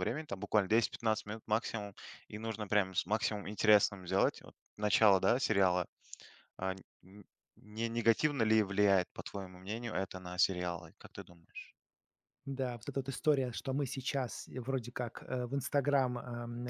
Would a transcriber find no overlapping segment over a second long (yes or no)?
yes